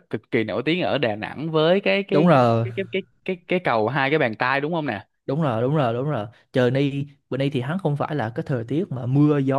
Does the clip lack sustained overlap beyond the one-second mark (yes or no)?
yes